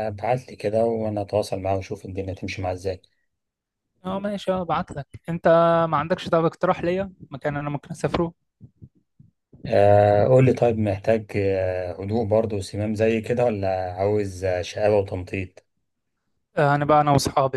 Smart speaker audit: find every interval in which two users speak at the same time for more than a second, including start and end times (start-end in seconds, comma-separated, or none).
none